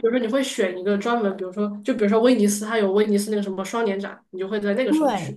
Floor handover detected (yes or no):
yes